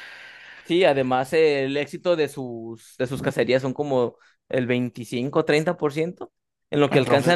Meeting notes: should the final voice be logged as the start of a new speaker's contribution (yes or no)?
no